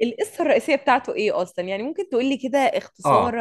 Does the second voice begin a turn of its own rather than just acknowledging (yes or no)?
yes